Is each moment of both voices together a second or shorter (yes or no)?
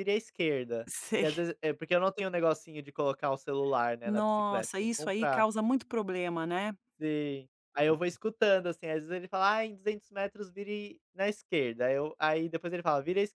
no